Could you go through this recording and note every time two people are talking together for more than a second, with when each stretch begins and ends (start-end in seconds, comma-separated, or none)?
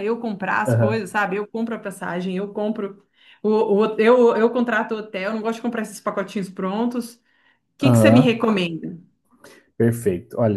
none